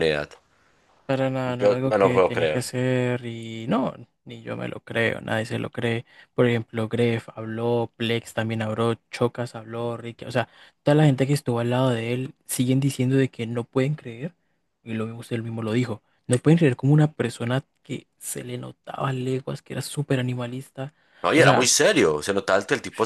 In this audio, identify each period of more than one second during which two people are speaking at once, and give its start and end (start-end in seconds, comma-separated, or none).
1.5-2.7